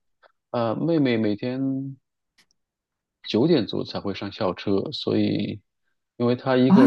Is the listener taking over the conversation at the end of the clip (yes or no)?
yes